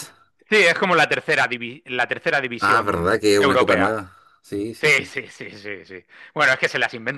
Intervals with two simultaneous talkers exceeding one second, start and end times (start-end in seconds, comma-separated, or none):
2.6-4.1